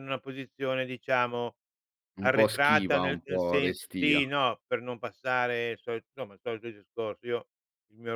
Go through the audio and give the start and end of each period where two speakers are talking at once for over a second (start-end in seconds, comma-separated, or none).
2.2-4.2